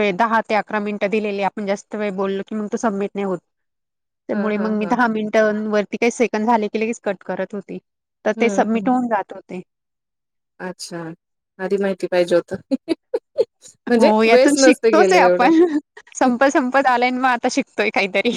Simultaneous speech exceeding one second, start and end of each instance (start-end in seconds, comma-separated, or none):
14.0-15.5